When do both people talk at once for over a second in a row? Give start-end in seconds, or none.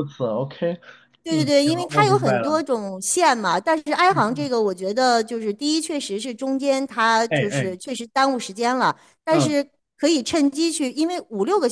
1.3-2.6